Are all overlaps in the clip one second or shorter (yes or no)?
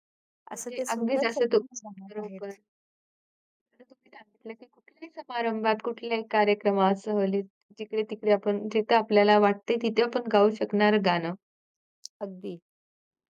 no